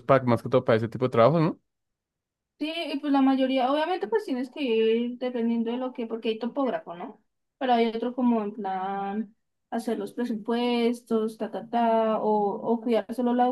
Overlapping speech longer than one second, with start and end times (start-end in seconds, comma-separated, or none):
none